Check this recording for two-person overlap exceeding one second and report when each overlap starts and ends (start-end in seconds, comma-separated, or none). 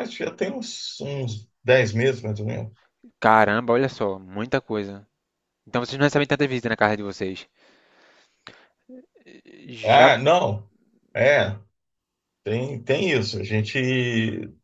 none